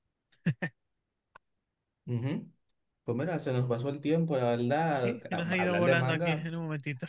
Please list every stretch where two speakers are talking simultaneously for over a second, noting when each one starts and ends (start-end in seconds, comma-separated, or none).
5.0-6.5